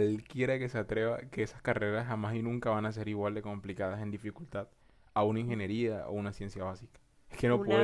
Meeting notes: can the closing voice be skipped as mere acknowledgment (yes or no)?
no